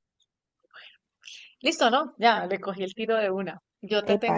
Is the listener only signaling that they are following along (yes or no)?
yes